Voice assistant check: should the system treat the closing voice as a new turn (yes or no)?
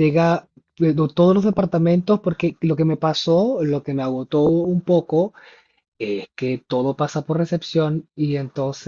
no